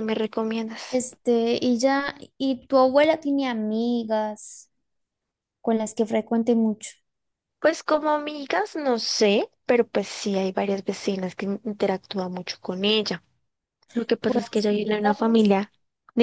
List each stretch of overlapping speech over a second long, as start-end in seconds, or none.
14.2-15.6